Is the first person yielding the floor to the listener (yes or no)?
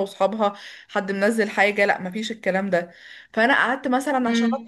no